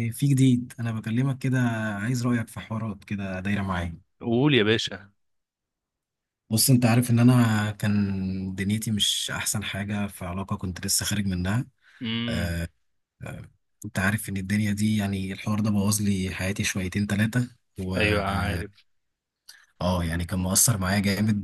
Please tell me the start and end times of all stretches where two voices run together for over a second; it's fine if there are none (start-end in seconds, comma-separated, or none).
none